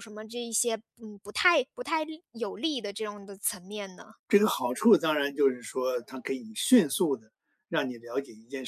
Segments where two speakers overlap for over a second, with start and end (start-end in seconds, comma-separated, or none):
none